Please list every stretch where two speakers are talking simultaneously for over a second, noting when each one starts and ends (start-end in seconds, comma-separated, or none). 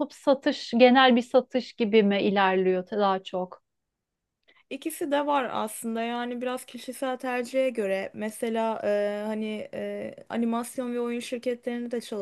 none